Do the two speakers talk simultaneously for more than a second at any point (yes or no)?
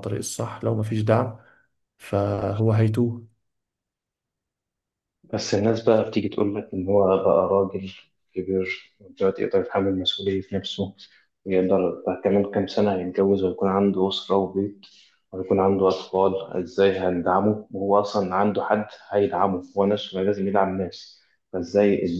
no